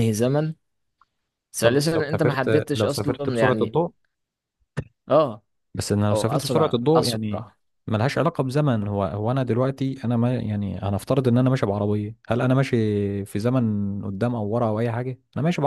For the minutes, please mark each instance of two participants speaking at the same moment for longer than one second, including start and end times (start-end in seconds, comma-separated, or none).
1.6-3.8, 6.1-7.5